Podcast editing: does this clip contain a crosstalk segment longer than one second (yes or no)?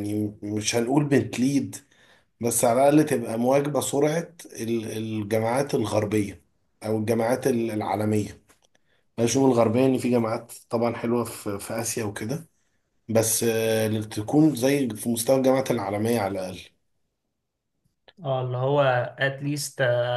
no